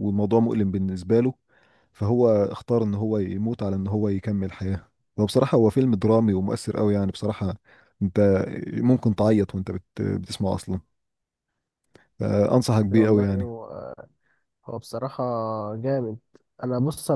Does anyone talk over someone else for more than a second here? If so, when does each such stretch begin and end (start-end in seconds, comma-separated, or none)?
none